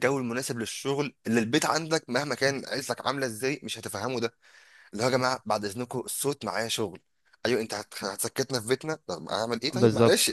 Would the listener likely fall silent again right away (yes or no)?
no